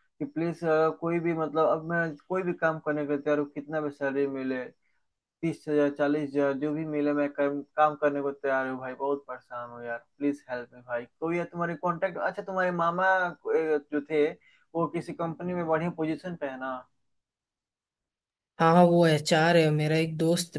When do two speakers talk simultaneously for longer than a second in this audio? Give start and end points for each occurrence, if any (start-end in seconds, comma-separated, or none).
none